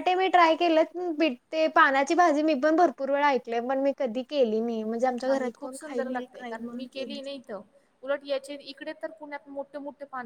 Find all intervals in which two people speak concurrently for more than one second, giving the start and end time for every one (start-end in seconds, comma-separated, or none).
5.2-6.8